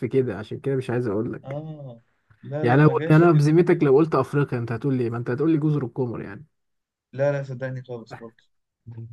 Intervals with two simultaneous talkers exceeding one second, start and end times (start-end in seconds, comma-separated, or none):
2.6-3.9